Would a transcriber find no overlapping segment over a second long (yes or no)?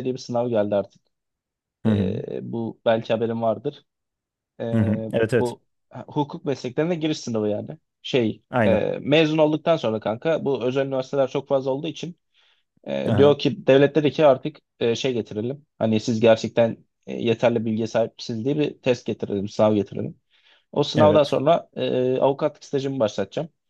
yes